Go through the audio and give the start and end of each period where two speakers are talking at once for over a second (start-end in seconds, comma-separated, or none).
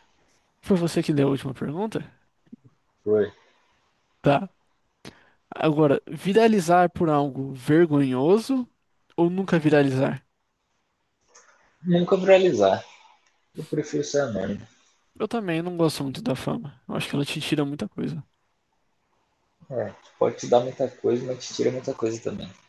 none